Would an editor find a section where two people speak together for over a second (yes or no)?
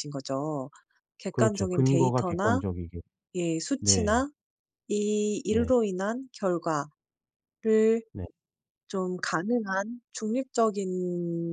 yes